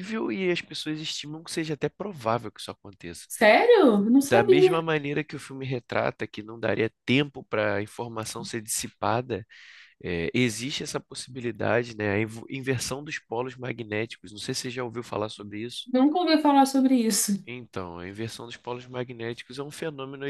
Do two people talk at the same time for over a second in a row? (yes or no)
no